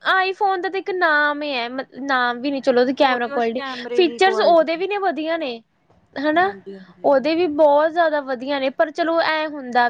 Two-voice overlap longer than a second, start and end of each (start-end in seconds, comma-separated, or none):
3.0-4.8